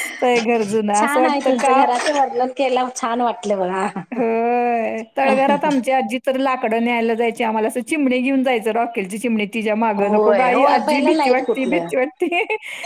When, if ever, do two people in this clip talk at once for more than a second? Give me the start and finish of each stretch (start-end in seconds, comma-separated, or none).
10.0-11.9